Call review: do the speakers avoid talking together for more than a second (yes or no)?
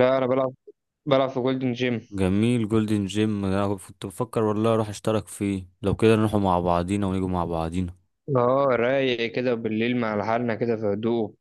yes